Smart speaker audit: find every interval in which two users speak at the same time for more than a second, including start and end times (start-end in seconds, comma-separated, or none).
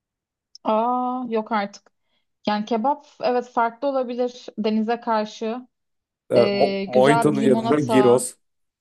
6.3-8.3